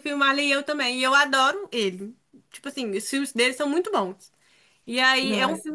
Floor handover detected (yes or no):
no